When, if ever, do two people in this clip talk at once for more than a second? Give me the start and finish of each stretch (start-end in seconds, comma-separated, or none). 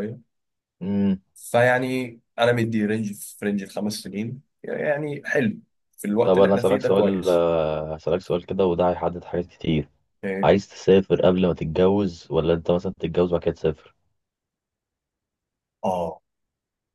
6.2-7.5